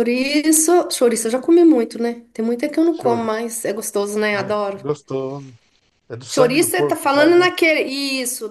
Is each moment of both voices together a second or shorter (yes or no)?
no